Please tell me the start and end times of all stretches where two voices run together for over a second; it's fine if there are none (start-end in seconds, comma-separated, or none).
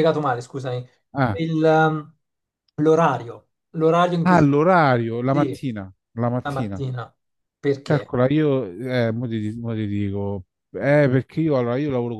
4.2-5.7